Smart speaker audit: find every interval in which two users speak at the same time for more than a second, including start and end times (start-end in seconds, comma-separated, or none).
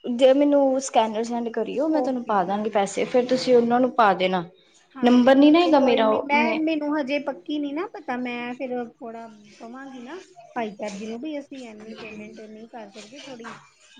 2.0-3.7